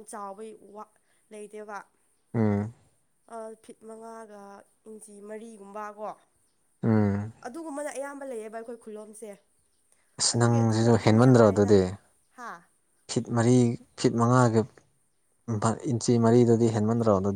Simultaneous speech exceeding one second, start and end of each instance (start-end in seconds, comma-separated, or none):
10.3-11.7